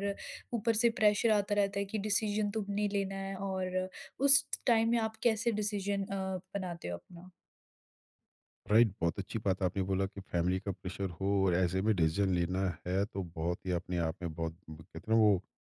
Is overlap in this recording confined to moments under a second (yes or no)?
yes